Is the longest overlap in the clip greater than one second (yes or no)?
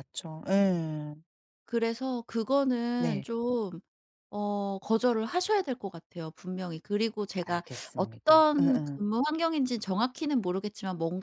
yes